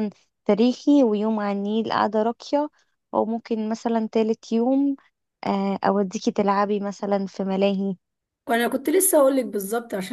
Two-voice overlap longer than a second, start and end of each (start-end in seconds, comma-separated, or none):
none